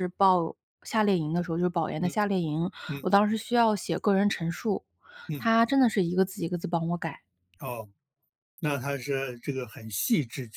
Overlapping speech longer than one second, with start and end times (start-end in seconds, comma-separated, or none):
none